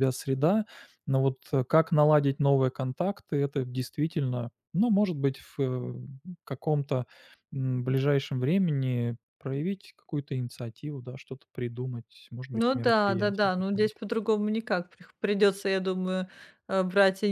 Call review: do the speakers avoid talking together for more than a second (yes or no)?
no